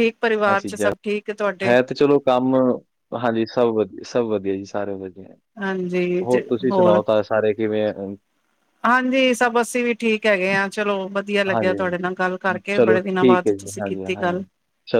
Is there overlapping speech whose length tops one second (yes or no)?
yes